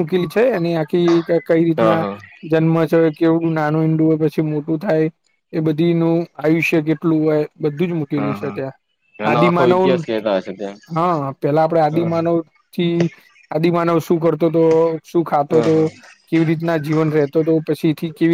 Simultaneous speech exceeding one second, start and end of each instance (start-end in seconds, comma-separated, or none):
none